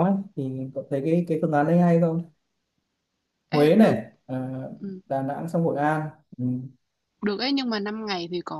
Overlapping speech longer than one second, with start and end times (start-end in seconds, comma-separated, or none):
none